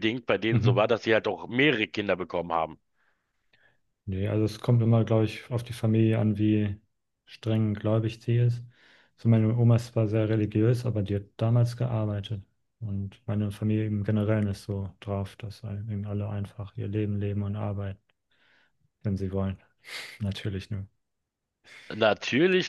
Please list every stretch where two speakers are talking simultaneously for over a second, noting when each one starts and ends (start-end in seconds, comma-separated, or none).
none